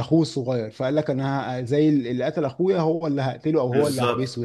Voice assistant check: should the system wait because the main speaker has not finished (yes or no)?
no